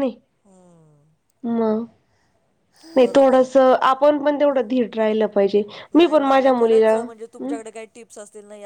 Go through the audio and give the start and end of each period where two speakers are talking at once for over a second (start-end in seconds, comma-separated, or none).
none